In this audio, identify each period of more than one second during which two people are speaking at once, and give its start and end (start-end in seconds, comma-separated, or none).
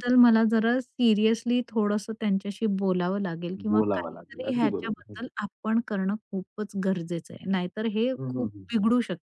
3.7-5.2